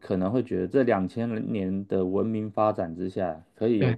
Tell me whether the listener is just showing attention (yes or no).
yes